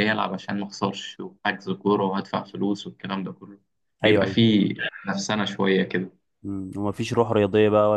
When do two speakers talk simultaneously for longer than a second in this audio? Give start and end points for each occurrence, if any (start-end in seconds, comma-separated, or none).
none